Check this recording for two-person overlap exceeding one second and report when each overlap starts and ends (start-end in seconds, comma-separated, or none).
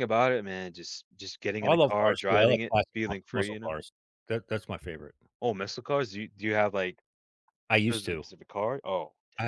1.6-3.8